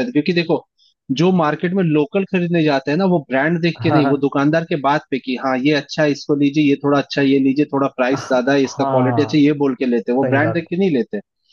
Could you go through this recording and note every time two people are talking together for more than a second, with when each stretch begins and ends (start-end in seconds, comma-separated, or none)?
8.1-9.5